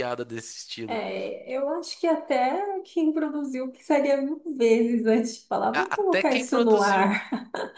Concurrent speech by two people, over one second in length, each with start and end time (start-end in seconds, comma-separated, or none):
5.7-7.0